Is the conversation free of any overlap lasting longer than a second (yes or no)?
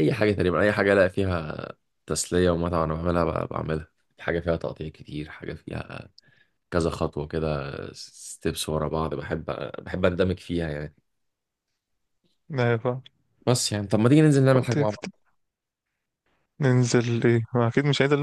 yes